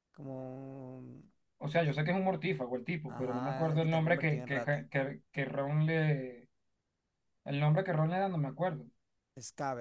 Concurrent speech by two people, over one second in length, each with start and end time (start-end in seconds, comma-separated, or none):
3.1-4.8